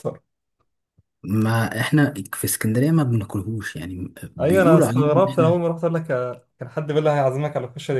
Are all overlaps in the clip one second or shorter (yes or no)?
no